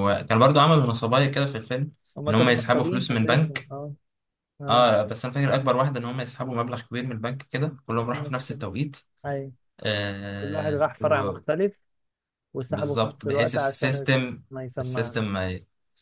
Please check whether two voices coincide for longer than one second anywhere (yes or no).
yes